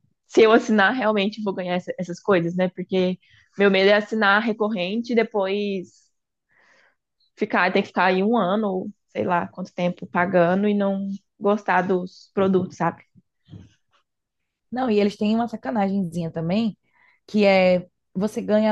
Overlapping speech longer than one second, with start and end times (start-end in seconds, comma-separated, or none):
none